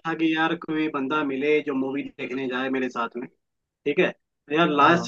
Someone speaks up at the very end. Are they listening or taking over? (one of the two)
listening